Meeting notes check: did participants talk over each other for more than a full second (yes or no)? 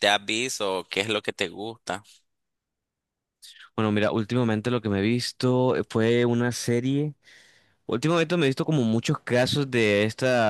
no